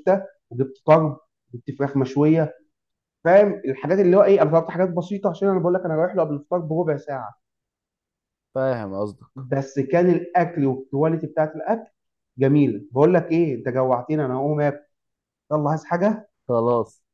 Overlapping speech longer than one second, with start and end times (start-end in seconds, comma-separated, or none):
none